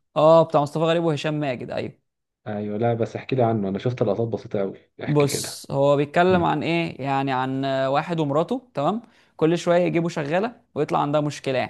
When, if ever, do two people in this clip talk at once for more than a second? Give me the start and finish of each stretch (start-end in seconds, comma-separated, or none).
none